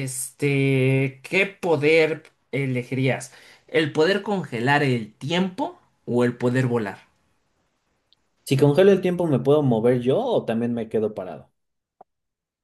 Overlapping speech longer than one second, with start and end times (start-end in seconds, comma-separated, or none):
none